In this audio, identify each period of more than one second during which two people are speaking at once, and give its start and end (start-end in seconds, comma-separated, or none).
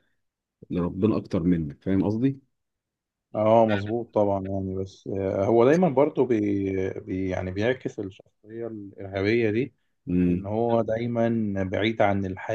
none